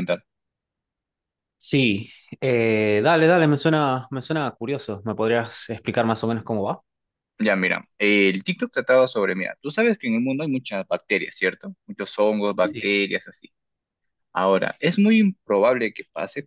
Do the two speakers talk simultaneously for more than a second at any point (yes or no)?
no